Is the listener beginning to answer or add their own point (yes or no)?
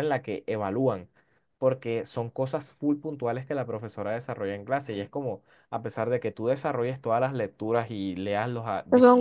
yes